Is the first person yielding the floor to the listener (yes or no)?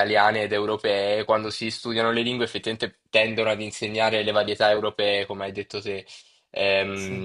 no